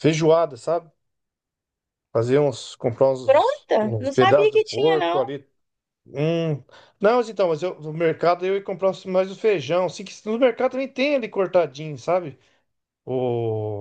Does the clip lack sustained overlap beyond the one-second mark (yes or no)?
no